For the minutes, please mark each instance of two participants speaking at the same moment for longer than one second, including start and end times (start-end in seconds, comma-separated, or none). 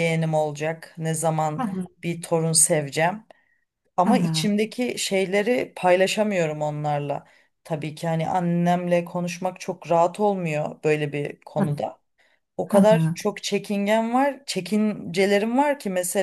none